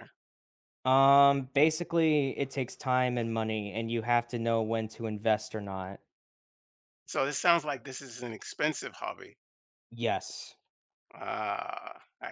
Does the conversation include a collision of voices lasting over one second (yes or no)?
no